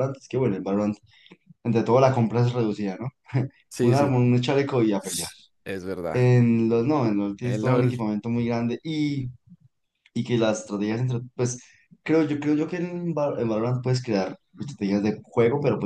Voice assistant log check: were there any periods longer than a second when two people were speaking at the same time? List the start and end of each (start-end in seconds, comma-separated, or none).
none